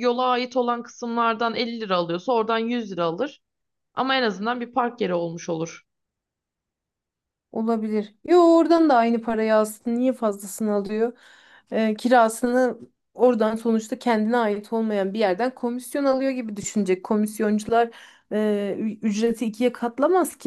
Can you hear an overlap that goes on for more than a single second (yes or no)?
no